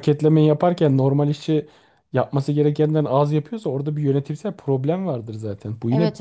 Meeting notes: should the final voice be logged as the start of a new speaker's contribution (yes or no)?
yes